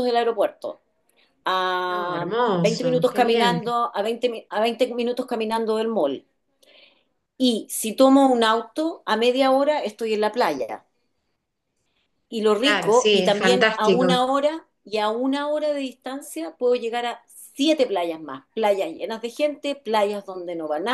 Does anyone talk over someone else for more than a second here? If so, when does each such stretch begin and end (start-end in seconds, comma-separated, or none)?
1.9-3.6, 12.6-14.2